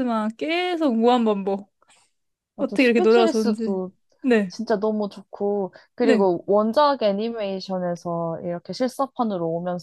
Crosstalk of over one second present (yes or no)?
yes